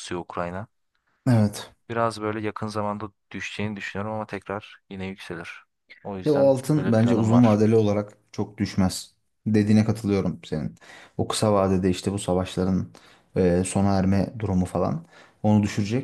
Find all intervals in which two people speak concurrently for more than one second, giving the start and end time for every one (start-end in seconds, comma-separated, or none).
6.2-7.6